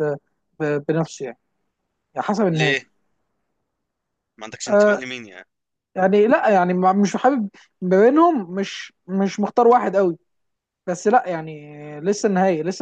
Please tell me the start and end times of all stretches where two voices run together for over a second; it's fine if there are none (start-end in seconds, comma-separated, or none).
none